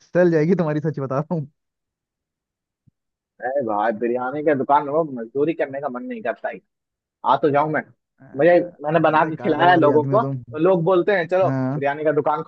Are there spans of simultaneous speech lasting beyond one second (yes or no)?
yes